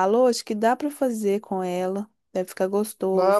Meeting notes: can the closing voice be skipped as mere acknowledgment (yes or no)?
no